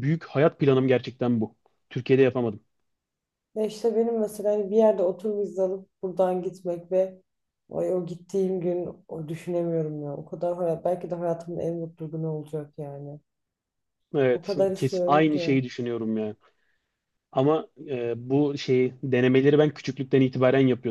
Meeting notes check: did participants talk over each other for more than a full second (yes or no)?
yes